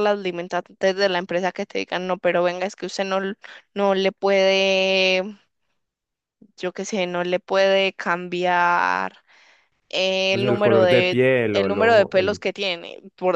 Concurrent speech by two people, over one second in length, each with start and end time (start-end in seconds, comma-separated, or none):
10.3-12.4